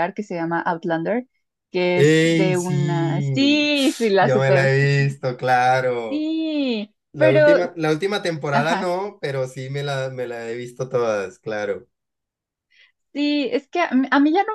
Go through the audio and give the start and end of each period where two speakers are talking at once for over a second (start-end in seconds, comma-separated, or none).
2.0-3.2